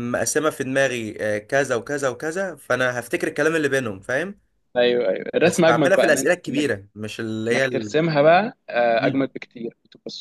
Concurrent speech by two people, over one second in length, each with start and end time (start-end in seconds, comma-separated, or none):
5.4-6.8